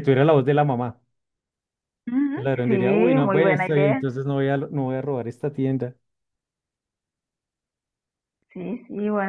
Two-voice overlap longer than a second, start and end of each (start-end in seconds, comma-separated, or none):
2.3-4.0